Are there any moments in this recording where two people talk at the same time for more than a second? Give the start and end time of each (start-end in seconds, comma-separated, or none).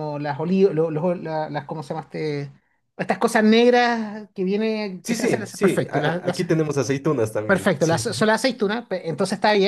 5.0-6.4